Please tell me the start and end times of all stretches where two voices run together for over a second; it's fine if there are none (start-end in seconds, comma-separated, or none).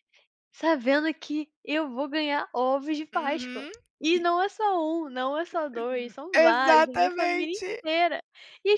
6.3-7.8